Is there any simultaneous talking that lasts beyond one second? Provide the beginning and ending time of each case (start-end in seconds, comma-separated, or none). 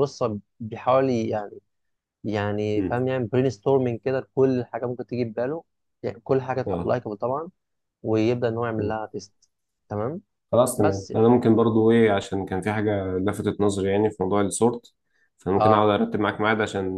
none